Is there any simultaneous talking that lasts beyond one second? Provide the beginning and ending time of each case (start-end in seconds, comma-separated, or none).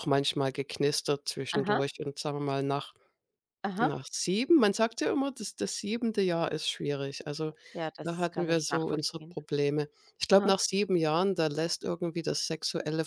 8.0-9.4